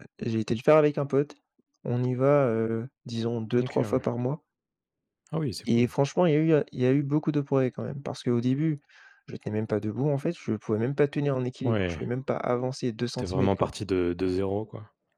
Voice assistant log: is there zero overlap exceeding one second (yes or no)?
yes